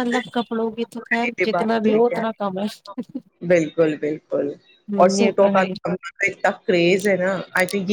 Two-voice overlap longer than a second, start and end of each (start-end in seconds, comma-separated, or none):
none